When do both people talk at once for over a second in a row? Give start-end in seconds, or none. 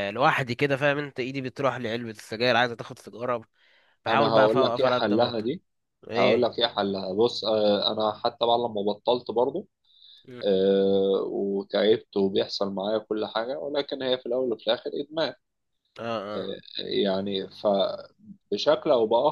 4.1-5.5